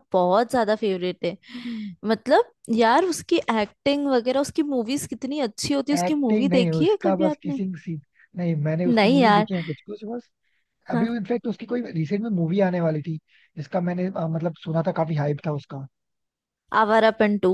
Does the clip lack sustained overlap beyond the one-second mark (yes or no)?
no